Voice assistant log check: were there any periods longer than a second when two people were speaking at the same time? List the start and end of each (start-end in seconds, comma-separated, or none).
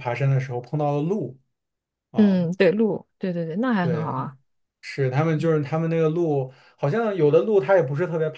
none